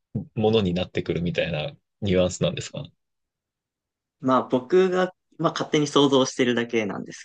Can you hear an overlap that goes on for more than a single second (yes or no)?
no